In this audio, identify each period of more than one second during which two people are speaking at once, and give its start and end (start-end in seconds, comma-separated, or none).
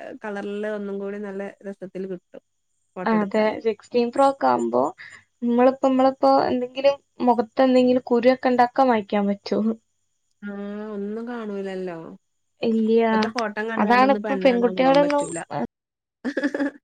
13.8-15.2